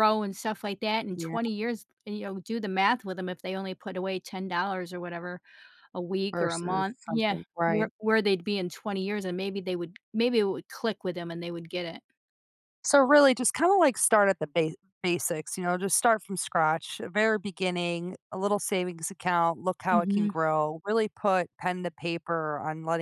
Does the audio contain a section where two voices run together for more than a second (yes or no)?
yes